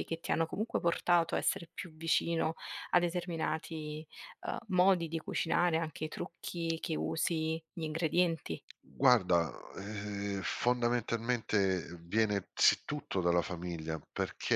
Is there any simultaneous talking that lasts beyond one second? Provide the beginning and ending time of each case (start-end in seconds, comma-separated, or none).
none